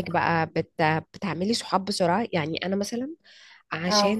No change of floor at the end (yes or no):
yes